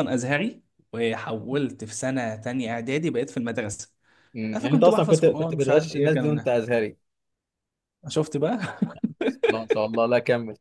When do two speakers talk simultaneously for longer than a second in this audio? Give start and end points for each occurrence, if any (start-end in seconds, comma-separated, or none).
4.5-6.5